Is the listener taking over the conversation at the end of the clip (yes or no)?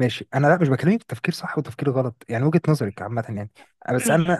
no